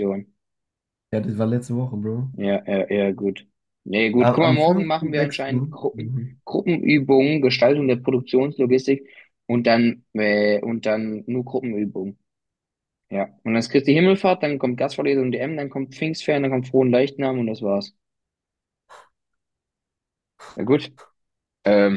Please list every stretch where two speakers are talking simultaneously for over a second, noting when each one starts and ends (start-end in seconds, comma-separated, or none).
4.2-6.4